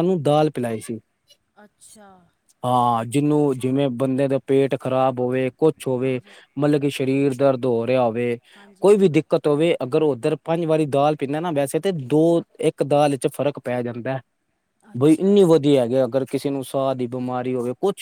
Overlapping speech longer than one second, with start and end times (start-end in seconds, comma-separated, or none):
none